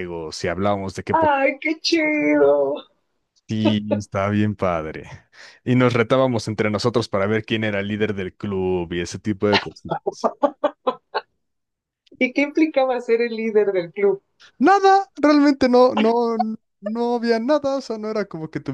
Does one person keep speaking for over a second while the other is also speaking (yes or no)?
no